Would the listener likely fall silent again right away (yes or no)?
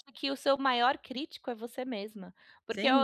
yes